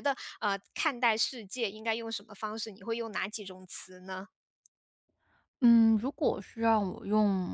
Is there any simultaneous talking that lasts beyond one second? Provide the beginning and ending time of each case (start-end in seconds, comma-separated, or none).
none